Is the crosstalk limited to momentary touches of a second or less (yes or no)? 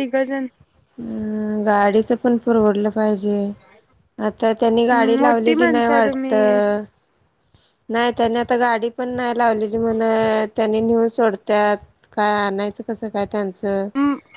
no